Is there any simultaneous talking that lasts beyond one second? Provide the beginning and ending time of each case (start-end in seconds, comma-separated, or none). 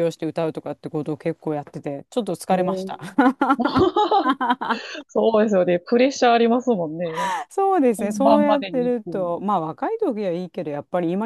8.0-9.4